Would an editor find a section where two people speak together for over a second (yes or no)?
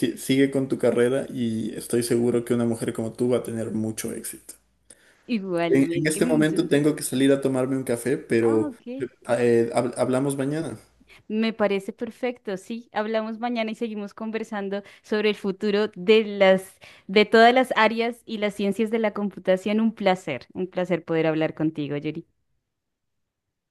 yes